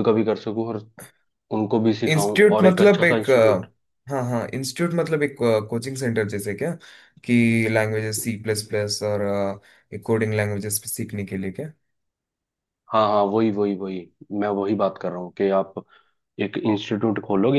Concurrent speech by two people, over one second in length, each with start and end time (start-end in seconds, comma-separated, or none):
2.1-3.6